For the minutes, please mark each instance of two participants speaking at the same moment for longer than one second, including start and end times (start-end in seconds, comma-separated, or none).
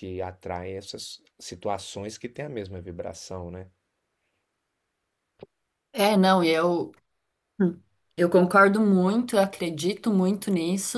none